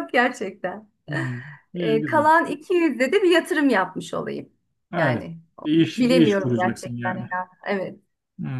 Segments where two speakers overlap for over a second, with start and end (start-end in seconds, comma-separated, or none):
6.0-7.3